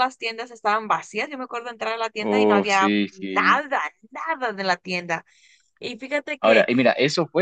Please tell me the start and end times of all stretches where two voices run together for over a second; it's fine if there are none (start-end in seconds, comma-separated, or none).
2.3-3.6